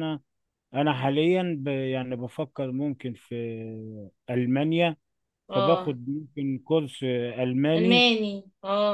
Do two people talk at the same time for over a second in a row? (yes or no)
no